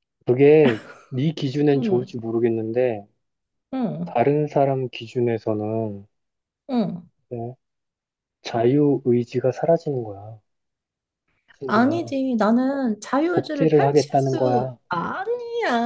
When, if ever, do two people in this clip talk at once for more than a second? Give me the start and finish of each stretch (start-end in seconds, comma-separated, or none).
13.3-14.8